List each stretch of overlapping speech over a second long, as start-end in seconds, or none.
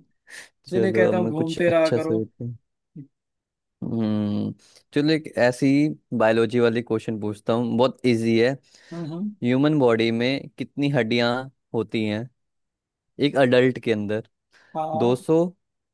0.7-2.2